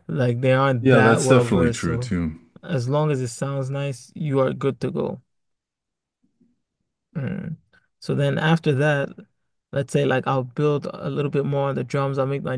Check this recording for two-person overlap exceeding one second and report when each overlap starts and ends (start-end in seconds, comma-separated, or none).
0.8-2.1